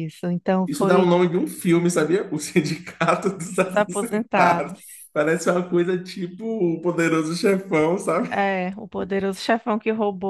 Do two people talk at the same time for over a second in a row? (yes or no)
yes